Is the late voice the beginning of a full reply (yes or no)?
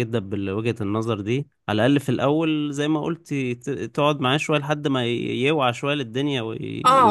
yes